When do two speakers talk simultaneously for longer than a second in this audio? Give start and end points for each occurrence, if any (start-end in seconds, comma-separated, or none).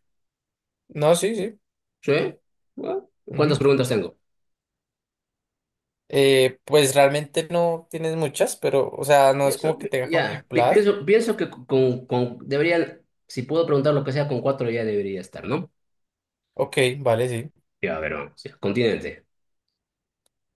9.4-10.9